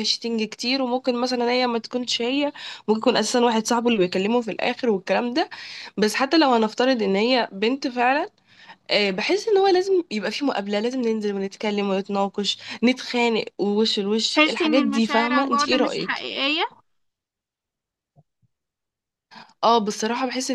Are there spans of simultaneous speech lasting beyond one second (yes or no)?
yes